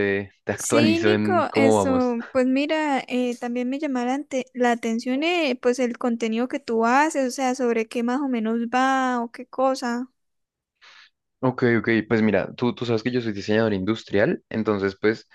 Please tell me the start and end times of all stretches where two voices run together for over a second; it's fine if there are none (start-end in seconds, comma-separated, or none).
0.6-2.2